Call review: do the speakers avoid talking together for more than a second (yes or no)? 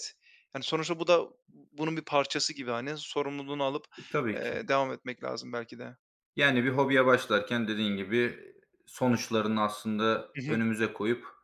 yes